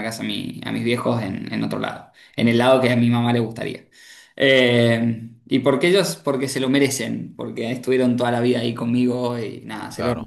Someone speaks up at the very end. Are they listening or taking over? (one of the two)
listening